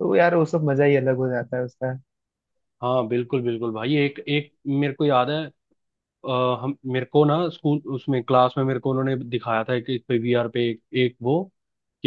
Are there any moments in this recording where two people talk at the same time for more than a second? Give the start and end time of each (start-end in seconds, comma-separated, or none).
none